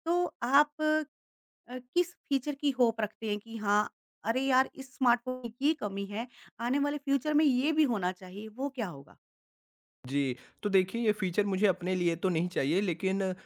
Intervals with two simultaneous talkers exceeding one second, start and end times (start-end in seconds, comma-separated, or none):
none